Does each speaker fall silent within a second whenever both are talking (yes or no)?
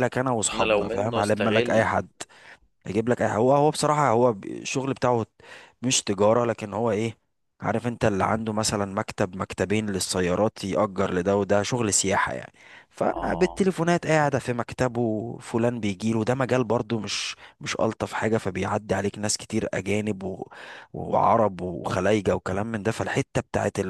no